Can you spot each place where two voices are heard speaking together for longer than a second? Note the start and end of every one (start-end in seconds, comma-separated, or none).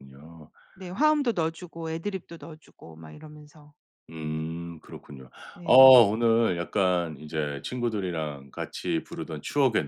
none